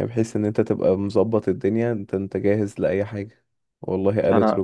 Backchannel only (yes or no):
yes